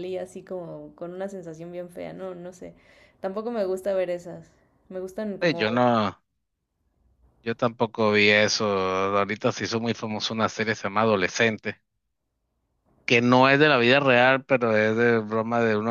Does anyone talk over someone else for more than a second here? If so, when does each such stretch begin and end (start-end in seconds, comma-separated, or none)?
none